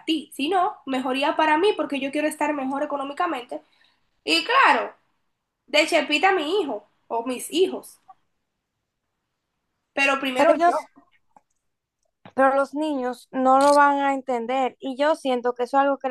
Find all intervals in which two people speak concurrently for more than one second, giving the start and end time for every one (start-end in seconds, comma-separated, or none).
none